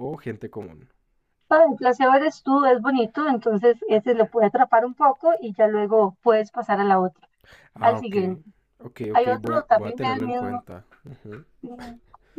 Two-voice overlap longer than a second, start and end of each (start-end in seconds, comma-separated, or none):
9.1-10.6